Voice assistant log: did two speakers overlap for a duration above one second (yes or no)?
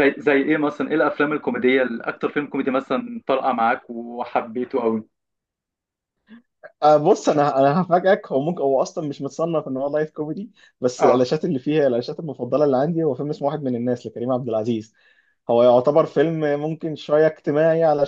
no